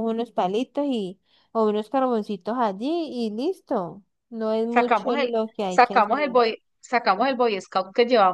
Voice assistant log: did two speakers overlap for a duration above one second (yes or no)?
yes